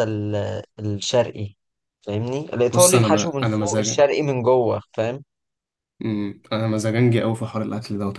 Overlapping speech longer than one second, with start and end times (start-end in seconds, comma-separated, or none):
2.7-4.1